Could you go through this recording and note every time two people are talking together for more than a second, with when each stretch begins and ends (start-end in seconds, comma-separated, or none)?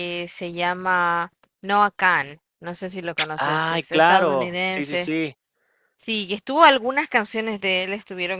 3.4-5.1